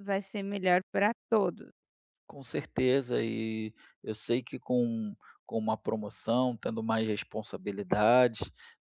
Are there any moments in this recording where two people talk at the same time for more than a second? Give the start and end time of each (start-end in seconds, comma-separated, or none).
none